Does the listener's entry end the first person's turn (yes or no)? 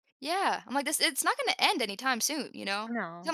no